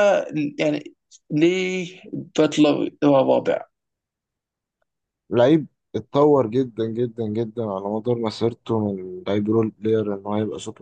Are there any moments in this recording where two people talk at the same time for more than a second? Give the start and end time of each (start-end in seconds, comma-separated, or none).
none